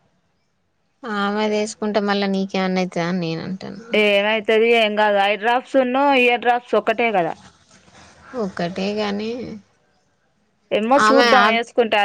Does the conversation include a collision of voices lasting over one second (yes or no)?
no